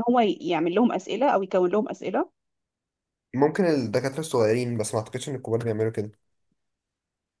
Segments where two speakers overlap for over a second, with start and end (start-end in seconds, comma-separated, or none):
none